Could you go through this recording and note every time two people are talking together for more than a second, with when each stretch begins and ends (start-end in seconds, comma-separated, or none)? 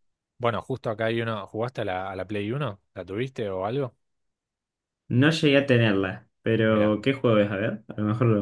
none